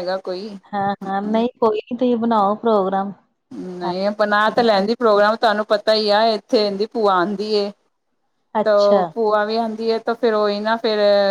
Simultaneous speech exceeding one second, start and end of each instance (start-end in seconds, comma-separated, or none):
none